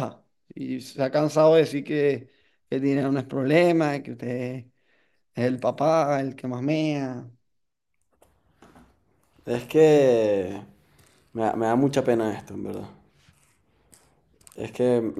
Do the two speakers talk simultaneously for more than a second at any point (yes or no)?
no